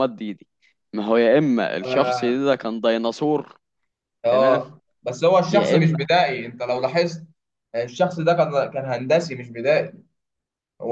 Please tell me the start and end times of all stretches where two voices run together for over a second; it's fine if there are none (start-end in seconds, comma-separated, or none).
none